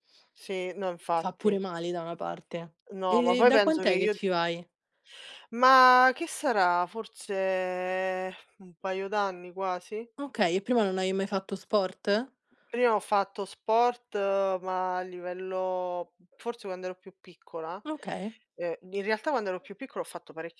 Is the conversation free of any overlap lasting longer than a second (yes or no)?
no